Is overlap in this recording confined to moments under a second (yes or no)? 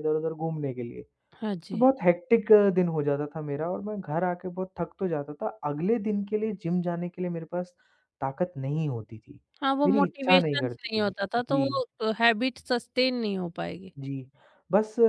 no